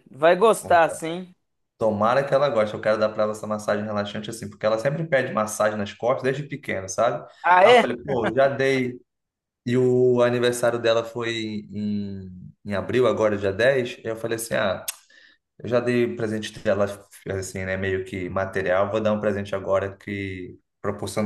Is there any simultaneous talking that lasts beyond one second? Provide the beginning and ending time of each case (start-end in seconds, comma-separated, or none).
none